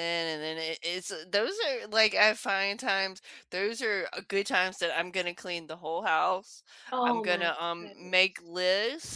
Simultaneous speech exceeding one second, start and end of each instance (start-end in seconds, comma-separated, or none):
7.0-8.5